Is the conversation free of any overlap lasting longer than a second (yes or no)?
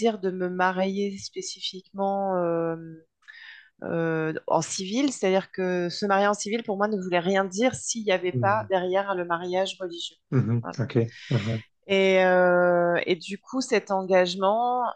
yes